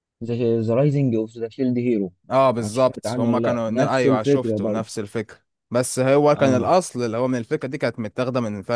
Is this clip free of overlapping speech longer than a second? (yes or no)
no